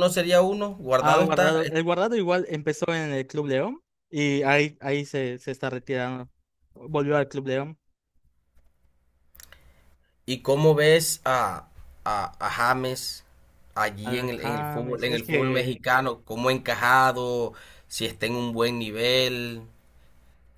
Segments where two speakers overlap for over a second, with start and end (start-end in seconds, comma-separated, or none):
14.0-15.8